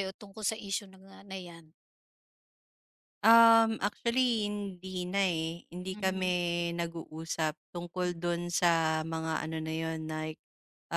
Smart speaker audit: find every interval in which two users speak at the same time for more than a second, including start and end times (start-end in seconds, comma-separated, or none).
none